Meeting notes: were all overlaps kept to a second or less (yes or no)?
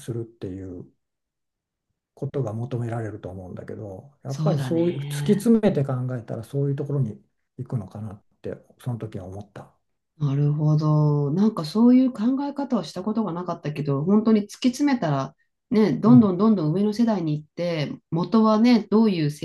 no